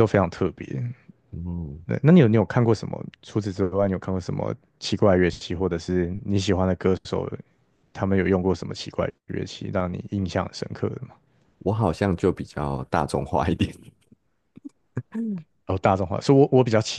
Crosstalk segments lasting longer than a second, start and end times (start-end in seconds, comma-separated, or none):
none